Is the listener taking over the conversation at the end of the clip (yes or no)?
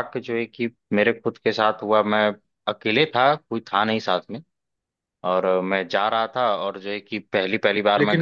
yes